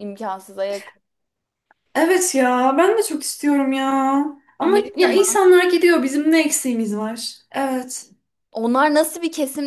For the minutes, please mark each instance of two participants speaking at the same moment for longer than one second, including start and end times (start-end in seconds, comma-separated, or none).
none